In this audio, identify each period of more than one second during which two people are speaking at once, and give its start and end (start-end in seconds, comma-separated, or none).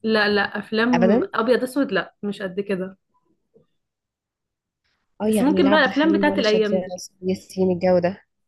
5.2-7.0